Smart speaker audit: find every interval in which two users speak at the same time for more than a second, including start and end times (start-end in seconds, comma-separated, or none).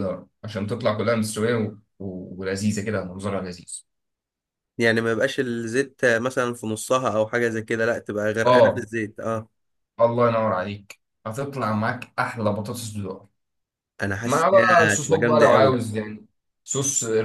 14.2-15.8